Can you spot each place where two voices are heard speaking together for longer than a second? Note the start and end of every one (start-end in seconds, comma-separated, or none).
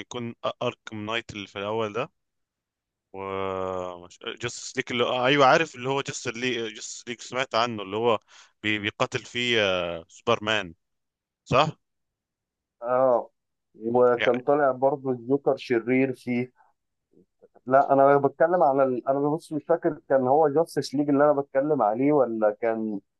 none